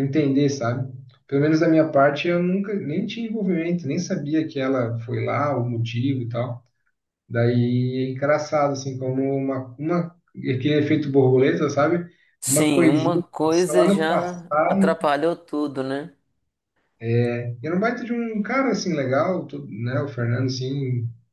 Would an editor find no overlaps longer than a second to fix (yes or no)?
no